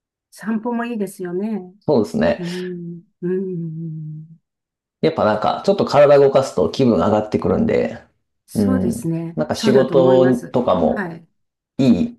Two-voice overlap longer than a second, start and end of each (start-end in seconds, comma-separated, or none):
8.5-11.1